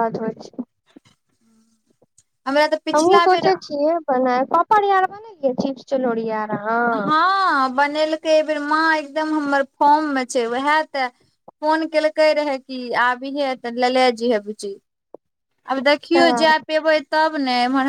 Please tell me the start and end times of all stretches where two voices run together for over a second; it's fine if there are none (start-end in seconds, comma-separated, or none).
none